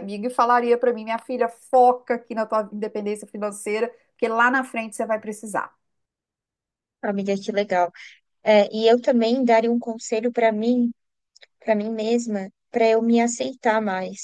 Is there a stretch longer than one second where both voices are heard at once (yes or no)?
no